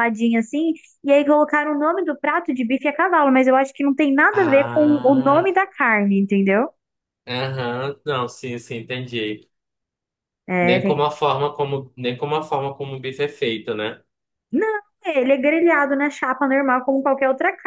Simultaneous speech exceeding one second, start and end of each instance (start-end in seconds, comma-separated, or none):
4.3-5.6